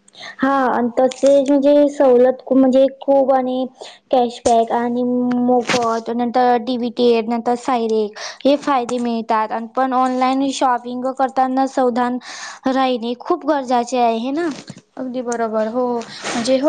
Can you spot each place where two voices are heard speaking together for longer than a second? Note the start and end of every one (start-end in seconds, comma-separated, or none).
none